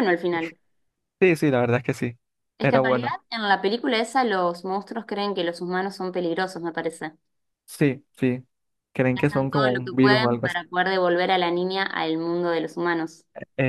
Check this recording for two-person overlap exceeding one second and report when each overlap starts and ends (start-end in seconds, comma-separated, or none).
9.2-10.6